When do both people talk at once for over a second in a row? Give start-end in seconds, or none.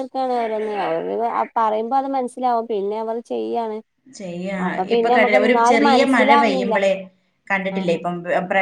4.7-6.7